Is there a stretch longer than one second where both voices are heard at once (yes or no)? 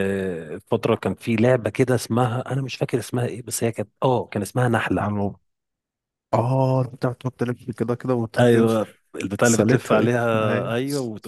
yes